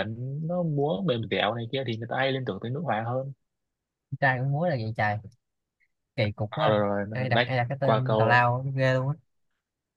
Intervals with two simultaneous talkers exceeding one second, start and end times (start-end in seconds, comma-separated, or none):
6.5-8.4